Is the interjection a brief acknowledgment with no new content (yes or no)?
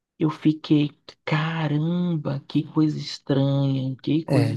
no